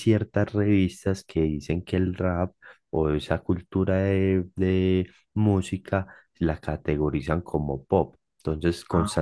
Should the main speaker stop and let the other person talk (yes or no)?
no